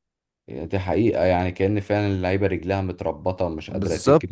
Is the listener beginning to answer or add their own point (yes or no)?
yes